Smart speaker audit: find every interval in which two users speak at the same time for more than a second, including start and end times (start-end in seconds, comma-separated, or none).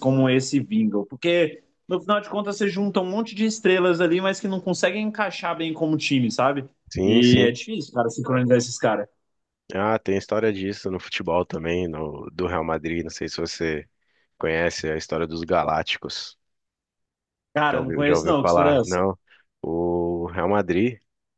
17.7-19.0